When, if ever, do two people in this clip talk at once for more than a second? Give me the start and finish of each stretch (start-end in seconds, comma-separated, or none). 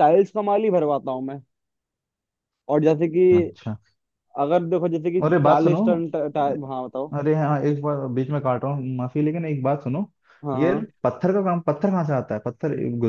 none